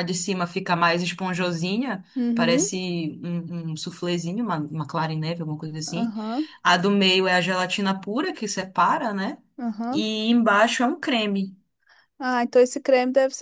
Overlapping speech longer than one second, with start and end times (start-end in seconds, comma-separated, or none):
none